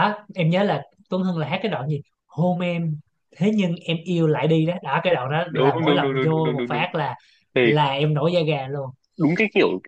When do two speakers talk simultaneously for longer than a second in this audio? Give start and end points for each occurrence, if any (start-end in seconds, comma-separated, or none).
5.5-6.8